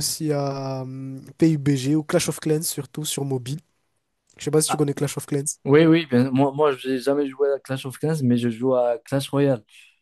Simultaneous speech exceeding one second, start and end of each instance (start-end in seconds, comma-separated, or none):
none